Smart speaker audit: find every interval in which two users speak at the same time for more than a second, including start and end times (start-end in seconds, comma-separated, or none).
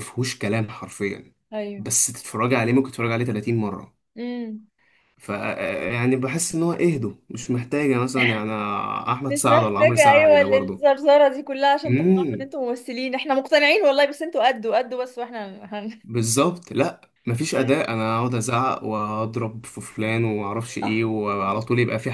9.3-10.8